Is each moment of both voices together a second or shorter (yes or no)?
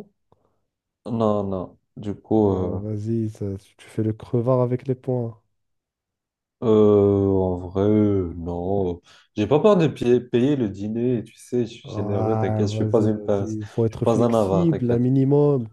no